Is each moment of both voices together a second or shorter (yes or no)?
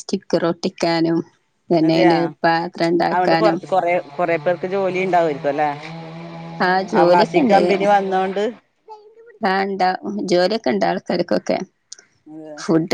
yes